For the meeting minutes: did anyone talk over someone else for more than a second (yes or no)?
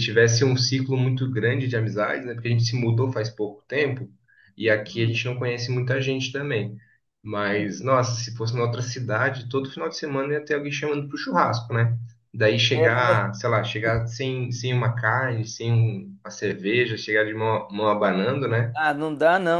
no